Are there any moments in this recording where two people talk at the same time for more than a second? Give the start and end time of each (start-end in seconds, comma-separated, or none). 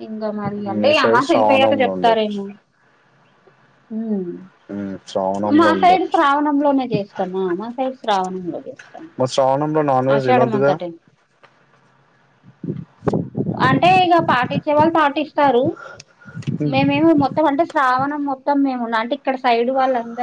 0.7-2.3